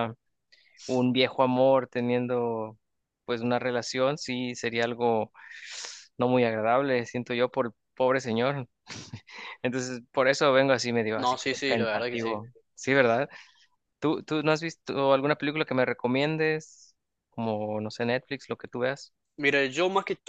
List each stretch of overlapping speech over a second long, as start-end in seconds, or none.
11.2-12.4